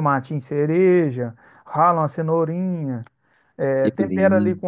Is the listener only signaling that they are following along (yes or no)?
yes